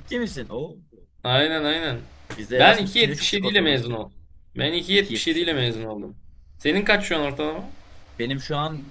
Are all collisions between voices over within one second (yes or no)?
no